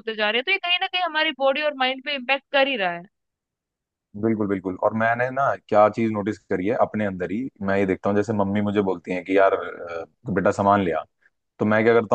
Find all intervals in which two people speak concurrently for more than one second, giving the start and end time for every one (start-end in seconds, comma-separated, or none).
none